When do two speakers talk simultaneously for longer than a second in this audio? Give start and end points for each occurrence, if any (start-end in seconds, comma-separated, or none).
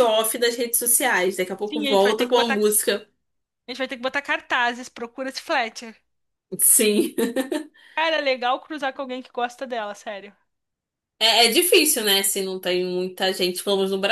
1.6-3.0